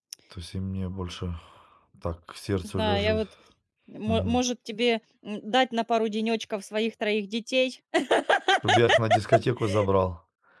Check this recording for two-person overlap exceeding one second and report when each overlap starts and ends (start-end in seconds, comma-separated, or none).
none